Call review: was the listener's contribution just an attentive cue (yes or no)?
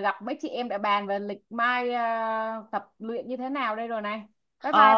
no